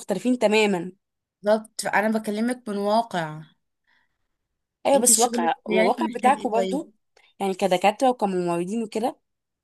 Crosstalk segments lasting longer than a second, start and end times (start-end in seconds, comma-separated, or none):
4.9-6.8